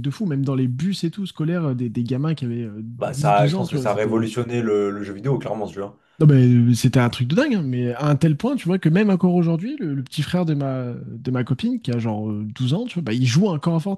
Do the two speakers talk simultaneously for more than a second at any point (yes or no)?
yes